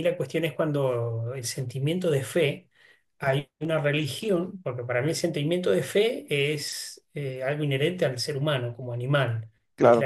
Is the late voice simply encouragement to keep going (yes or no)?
yes